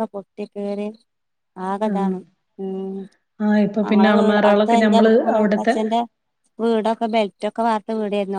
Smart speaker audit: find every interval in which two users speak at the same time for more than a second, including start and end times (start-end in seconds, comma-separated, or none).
3.9-5.7